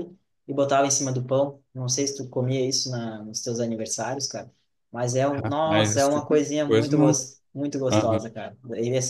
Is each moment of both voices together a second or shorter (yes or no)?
no